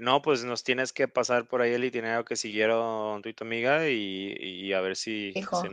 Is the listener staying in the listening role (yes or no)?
yes